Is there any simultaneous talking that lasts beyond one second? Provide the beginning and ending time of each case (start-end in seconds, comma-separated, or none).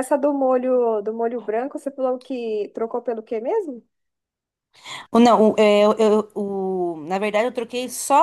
none